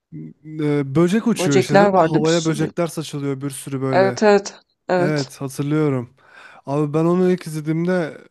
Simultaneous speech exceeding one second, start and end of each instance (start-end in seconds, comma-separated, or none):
1.3-2.7